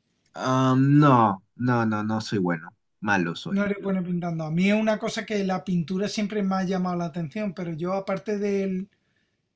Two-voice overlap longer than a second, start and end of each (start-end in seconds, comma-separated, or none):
none